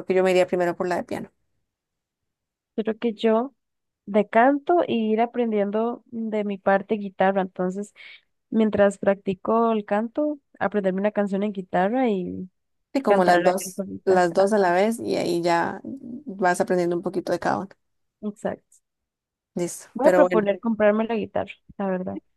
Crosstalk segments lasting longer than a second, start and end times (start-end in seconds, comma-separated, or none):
13.1-14.5